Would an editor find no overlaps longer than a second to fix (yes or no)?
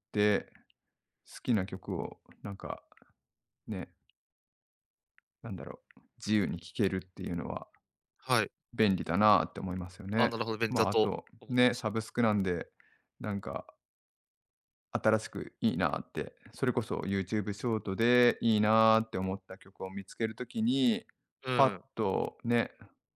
no